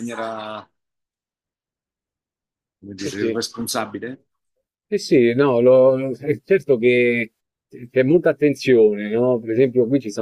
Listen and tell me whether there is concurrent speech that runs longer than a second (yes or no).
no